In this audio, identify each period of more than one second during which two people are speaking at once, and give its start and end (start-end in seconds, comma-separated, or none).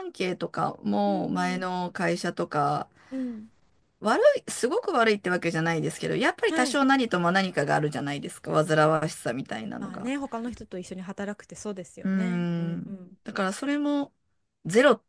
none